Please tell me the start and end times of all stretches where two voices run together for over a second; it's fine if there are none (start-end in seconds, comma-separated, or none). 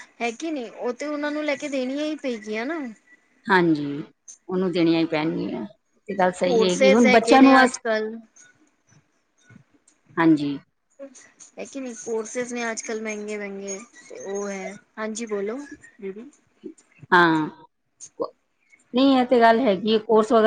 6.4-7.8